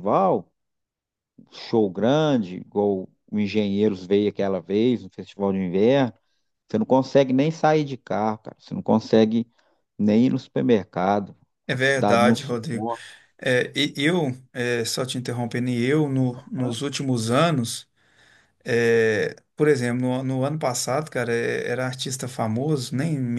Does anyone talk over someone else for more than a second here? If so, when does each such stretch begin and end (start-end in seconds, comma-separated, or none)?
11.7-12.9